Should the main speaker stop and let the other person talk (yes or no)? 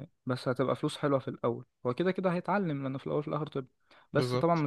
no